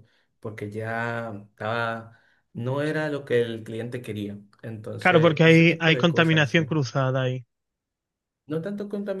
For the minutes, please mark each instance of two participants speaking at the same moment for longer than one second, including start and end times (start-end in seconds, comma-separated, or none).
5.0-6.7